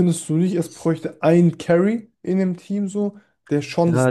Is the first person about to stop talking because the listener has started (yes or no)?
yes